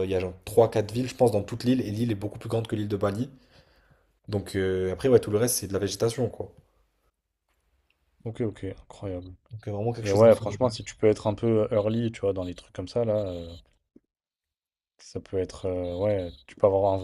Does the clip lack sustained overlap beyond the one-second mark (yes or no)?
yes